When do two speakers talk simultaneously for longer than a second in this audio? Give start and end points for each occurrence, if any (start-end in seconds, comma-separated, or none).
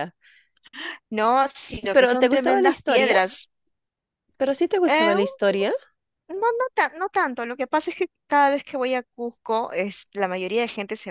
1.9-3.2